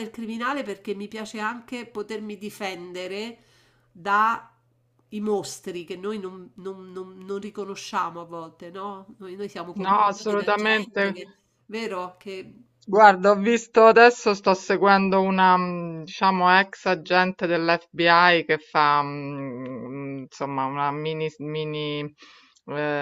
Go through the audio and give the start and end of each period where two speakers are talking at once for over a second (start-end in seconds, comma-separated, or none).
9.8-11.1